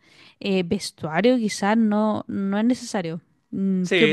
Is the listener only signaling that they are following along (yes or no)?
no